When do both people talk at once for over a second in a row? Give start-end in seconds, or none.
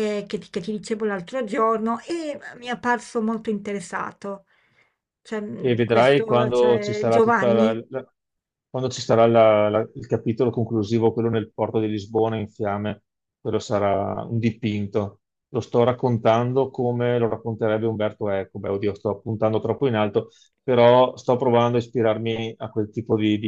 5.6-7.8